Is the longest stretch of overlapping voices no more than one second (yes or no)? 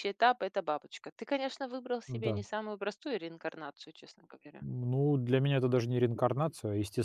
yes